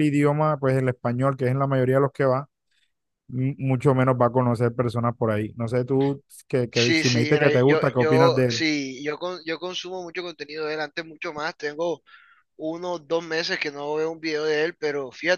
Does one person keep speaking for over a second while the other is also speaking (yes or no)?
yes